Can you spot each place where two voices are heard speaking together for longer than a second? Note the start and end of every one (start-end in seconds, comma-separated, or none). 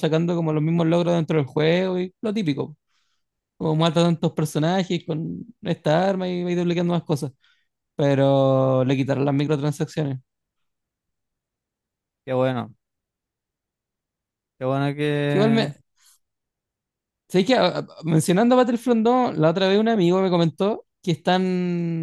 none